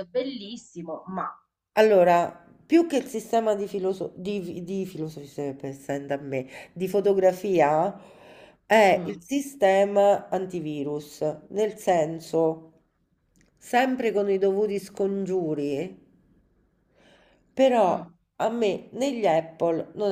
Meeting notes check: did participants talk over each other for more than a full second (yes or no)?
no